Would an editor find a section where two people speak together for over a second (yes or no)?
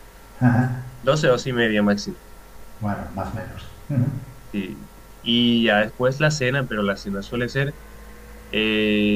no